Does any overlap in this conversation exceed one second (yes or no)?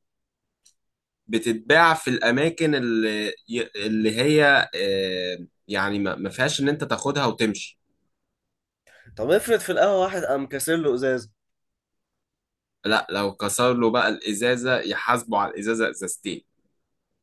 no